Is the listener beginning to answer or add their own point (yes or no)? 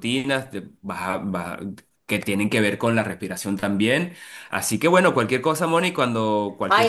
yes